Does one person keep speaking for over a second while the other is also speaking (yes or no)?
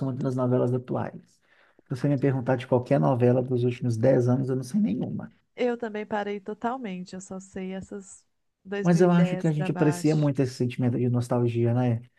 yes